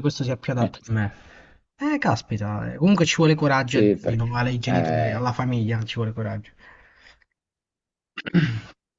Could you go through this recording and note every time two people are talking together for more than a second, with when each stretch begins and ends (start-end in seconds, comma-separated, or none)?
3.6-5.3